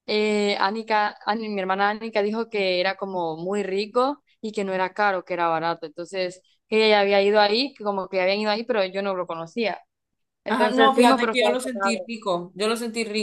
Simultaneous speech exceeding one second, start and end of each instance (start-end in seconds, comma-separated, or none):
10.5-12.1